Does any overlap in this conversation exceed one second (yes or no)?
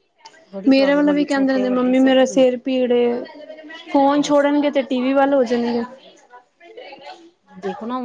yes